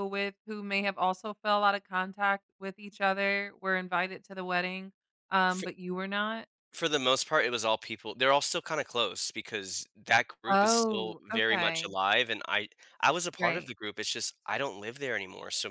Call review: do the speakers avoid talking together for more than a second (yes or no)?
no